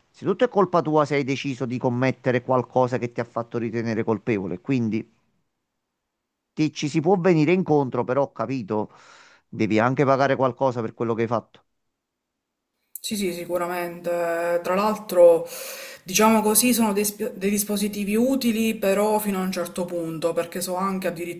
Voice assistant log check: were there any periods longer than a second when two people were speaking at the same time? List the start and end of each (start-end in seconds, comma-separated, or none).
none